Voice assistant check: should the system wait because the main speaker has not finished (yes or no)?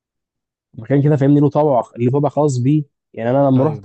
yes